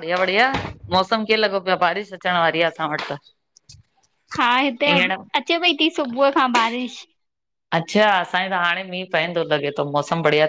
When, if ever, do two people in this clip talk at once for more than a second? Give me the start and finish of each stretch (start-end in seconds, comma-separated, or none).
none